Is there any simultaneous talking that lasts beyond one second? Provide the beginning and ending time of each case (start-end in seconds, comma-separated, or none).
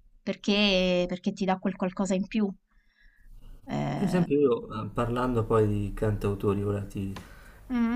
none